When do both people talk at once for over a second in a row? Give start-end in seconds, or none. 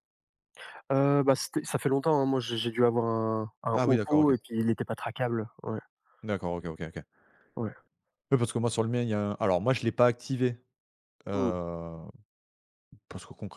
none